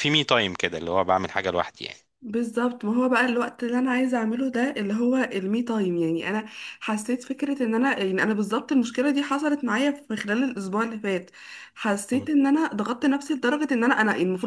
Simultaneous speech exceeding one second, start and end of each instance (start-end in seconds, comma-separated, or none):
none